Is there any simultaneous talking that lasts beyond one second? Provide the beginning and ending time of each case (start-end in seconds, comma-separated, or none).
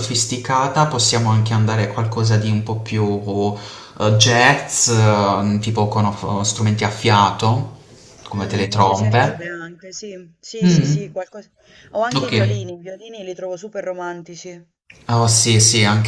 8.3-9.6